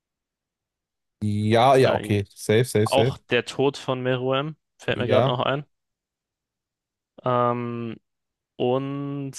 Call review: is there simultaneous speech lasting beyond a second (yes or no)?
no